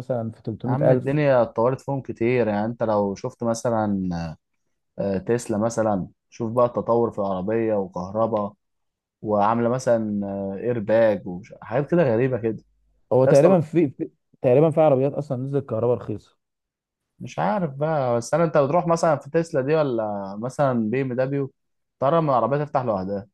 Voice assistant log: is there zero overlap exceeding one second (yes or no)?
yes